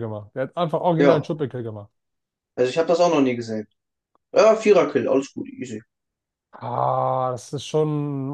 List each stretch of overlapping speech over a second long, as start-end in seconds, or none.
none